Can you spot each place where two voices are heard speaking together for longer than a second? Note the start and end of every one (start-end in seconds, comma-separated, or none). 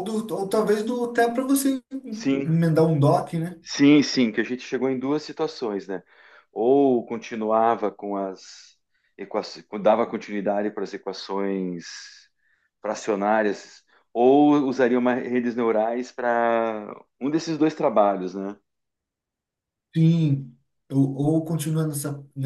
none